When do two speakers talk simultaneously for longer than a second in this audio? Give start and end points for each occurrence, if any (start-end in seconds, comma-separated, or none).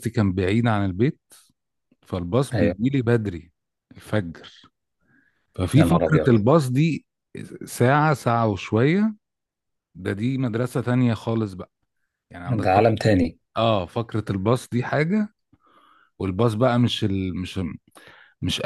none